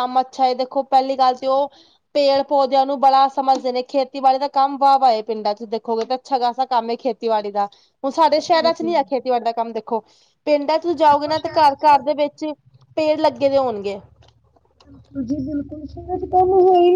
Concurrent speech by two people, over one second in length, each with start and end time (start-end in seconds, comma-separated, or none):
10.9-12.2